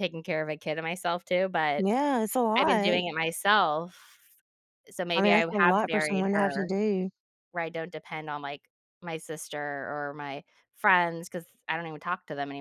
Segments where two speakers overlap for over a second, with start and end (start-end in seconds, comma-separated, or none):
5.2-6.7